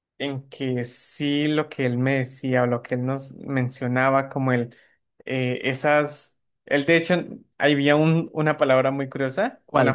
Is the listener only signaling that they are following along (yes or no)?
no